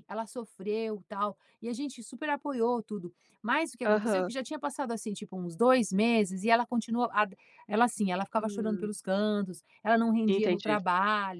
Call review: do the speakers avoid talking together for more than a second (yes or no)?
yes